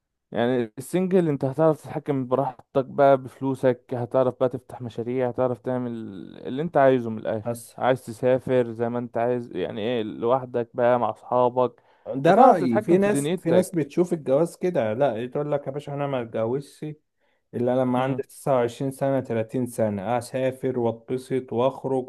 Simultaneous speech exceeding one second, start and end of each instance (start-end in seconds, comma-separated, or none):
12.3-13.8